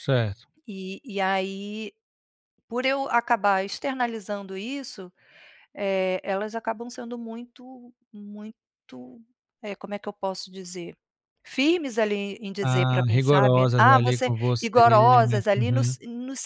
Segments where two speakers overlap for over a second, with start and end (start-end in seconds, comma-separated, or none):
12.6-15.9